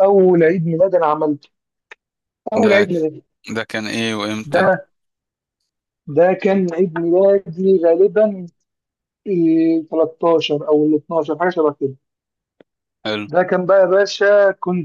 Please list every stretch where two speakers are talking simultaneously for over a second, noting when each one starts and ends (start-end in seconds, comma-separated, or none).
none